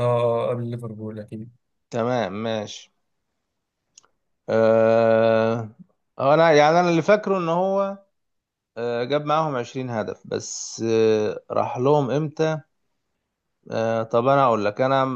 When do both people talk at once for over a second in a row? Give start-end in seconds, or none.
none